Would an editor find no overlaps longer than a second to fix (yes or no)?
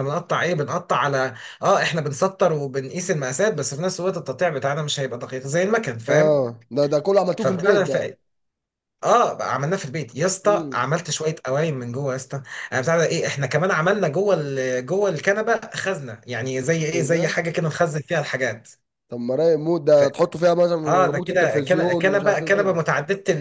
no